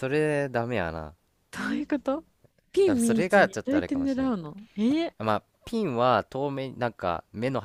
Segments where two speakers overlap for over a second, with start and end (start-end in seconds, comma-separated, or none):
2.8-4.3